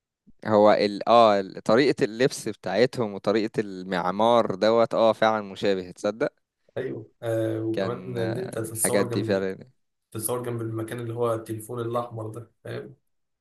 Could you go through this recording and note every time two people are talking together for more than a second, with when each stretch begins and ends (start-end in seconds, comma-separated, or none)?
7.7-9.5